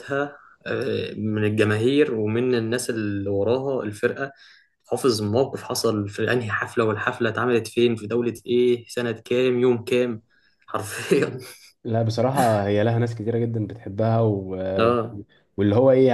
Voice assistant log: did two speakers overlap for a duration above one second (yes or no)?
no